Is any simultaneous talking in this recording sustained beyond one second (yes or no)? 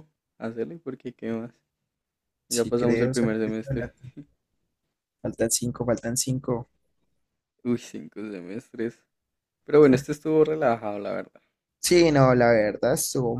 yes